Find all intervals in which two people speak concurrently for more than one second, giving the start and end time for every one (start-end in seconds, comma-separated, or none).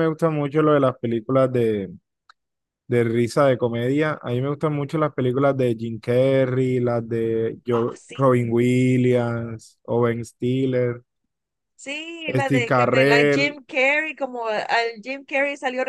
12.4-13.6